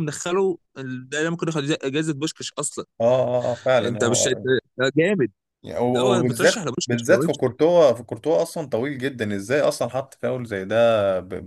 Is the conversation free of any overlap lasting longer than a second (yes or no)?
no